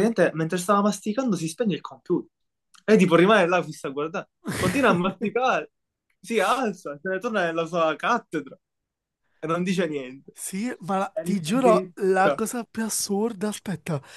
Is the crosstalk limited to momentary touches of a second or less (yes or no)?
no